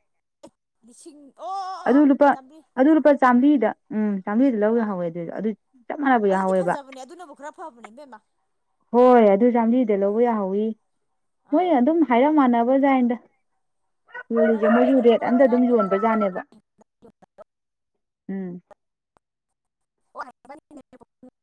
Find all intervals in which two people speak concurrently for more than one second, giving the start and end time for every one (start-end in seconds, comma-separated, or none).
14.4-16.2